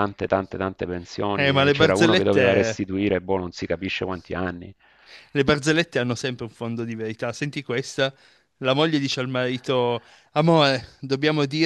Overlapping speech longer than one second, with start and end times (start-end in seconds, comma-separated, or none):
1.4-2.8